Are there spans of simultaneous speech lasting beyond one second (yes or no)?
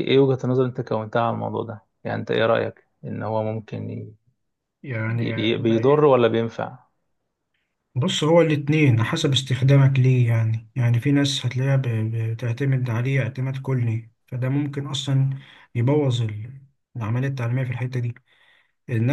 no